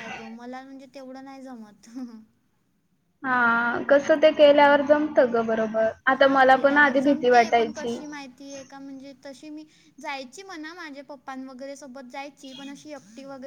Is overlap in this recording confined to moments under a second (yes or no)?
no